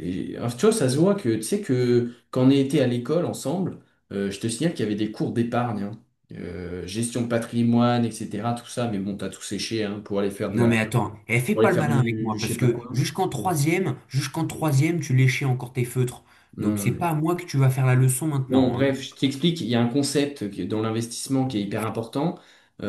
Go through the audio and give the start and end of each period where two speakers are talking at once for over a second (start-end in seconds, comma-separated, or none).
11.5-13.0